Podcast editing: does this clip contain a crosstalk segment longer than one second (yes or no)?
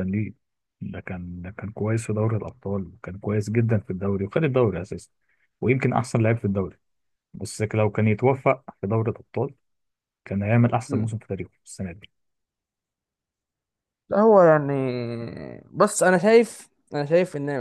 no